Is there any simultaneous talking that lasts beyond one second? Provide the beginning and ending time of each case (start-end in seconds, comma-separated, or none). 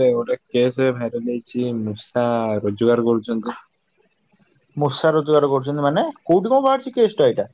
none